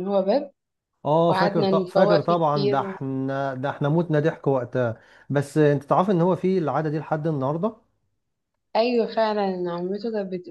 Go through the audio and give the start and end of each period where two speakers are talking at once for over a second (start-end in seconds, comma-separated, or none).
1.3-2.9